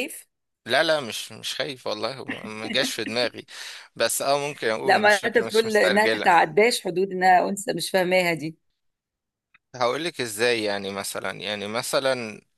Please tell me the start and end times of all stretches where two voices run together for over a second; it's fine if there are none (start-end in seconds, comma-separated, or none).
4.8-6.3